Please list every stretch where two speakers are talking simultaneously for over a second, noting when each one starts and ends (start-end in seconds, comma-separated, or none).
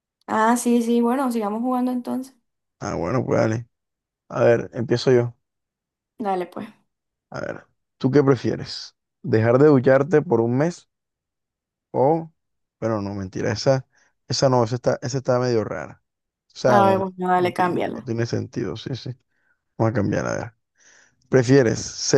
16.7-18.1